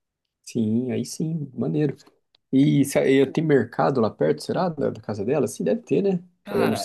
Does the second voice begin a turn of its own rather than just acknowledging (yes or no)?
yes